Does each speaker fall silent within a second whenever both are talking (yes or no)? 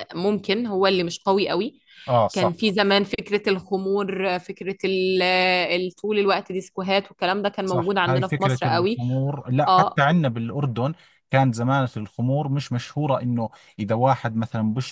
no